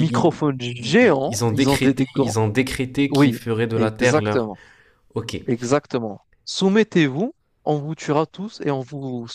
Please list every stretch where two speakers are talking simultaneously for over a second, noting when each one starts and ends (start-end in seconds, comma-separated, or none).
0.8-2.4, 3.1-4.5